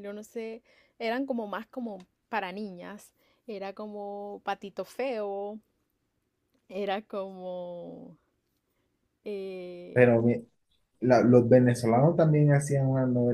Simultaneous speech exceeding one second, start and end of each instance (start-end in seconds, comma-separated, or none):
none